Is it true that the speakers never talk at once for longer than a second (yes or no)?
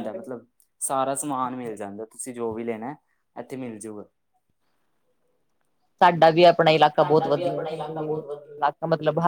no